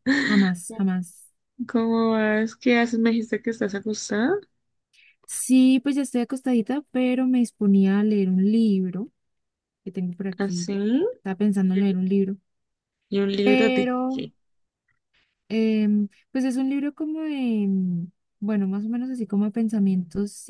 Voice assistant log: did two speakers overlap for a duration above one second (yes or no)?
no